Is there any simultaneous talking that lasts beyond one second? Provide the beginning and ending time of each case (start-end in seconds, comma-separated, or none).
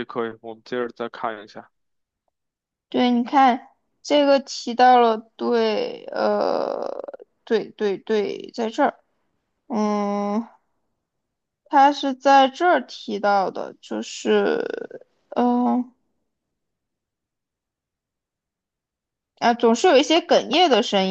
none